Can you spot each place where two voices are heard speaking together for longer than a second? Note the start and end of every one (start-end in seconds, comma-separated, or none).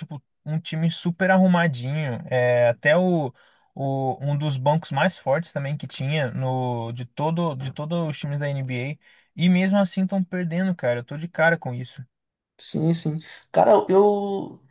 none